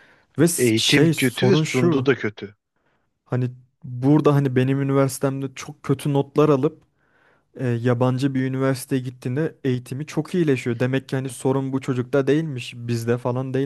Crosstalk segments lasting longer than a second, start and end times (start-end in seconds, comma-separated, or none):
0.6-2.1